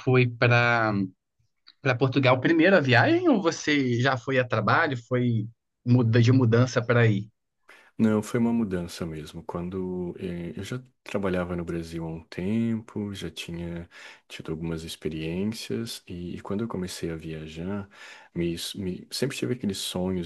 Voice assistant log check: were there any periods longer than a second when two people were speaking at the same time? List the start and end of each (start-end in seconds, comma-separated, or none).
none